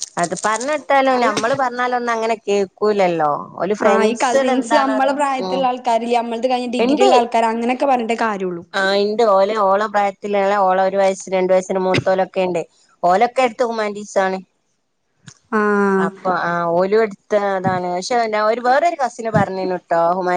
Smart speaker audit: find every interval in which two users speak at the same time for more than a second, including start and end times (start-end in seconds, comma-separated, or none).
3.9-5.6